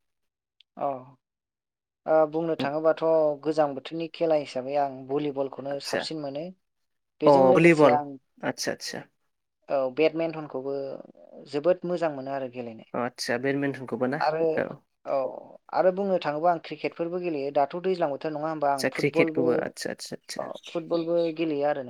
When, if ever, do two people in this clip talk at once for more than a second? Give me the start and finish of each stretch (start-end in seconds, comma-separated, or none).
18.7-20.4